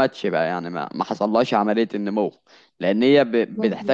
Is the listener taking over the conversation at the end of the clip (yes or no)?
no